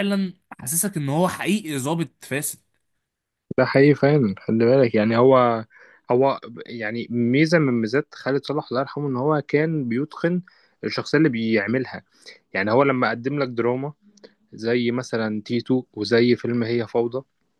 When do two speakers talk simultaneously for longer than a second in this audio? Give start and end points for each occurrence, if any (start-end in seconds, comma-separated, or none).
none